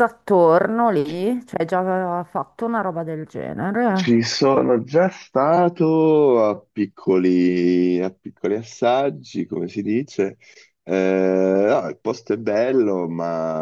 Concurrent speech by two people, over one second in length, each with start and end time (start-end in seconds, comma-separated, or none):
none